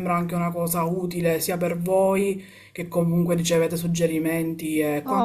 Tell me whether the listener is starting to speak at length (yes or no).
yes